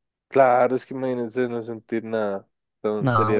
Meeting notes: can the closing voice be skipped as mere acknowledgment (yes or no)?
yes